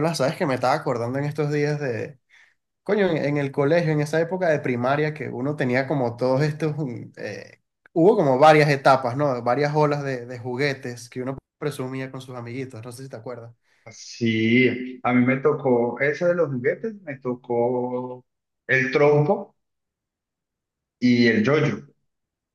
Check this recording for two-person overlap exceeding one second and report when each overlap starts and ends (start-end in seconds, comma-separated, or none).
none